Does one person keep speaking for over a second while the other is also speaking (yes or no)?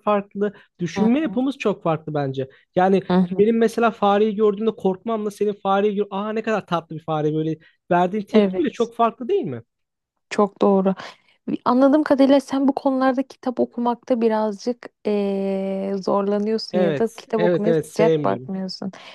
yes